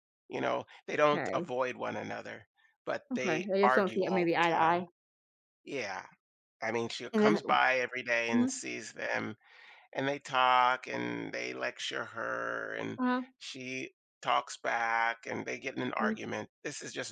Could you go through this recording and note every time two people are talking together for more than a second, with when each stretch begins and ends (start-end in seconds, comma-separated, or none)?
3.1-4.8